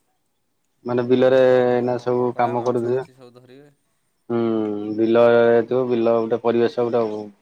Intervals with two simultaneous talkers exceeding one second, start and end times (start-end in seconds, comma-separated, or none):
0.9-3.7